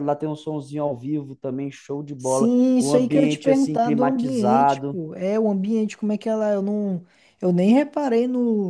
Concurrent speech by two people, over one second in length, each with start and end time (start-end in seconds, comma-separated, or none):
2.2-5.0